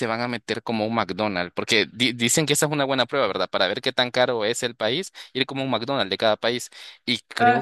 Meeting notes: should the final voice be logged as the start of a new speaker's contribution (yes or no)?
no